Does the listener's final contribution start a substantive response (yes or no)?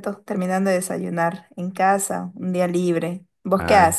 yes